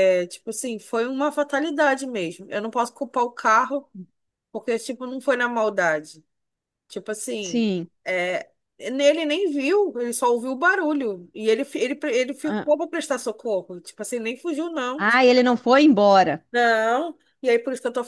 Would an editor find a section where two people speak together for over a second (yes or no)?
no